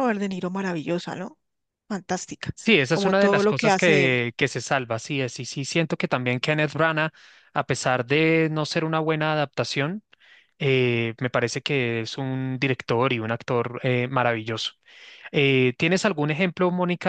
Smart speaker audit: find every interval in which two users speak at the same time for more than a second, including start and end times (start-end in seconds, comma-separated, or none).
2.9-4.2